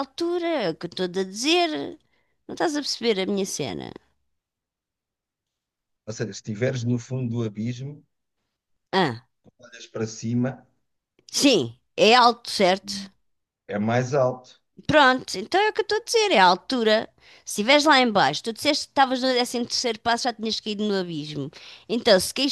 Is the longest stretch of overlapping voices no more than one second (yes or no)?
yes